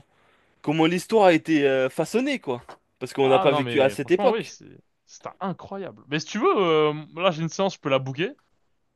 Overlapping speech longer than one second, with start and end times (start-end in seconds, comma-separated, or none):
3.2-4.6